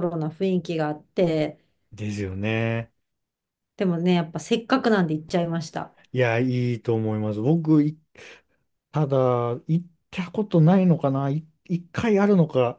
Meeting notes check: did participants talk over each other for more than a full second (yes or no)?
no